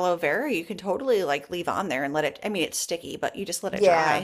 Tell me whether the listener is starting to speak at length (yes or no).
yes